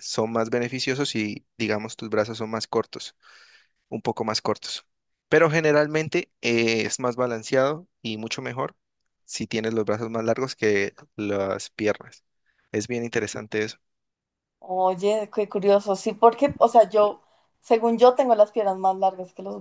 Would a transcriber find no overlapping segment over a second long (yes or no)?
yes